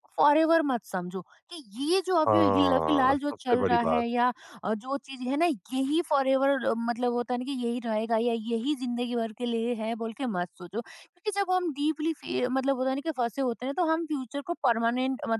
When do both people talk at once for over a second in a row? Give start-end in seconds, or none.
2.3-4.0